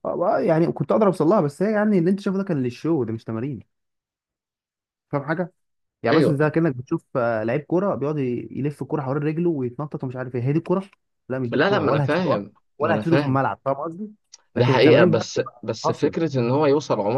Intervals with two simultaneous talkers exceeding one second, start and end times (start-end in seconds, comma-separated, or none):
11.5-13.4, 14.6-16.3